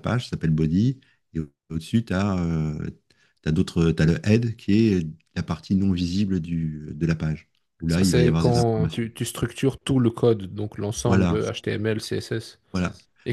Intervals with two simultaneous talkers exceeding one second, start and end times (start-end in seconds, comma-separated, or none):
7.8-9.1